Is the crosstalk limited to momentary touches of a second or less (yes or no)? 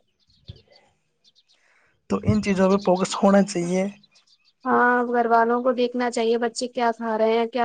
yes